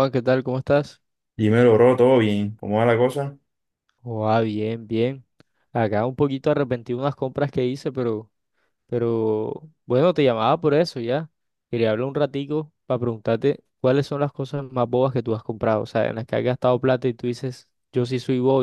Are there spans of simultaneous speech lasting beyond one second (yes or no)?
no